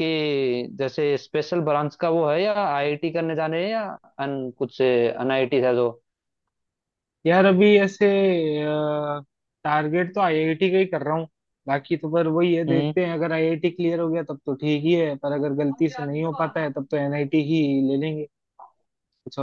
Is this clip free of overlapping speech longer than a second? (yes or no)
yes